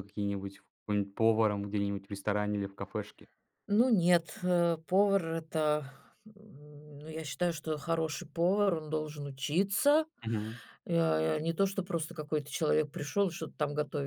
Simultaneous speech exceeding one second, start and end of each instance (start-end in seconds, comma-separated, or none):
none